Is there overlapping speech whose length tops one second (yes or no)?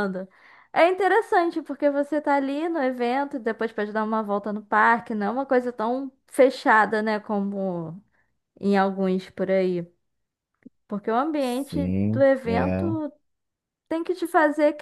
yes